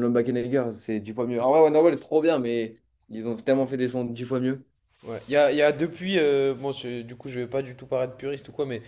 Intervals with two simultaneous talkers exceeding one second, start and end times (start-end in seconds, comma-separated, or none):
none